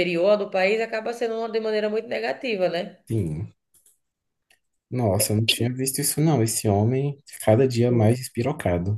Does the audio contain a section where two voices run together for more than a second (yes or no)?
no